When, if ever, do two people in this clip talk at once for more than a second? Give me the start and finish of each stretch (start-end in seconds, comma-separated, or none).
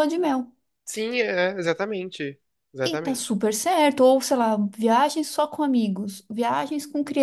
none